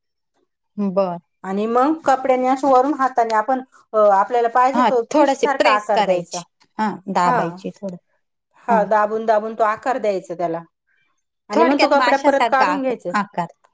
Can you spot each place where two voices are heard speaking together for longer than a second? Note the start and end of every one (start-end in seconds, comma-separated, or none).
4.7-6.4, 11.5-13.1